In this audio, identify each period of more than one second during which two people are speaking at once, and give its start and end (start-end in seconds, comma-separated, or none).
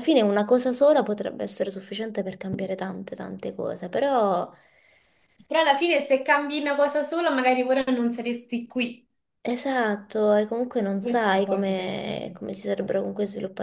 11.0-12.4